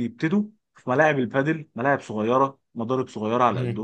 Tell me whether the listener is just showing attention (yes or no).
yes